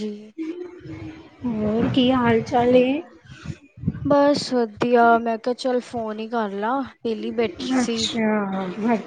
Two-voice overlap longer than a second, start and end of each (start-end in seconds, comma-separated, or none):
none